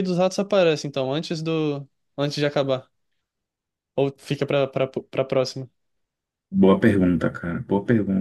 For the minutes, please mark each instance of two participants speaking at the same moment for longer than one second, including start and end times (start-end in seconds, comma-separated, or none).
none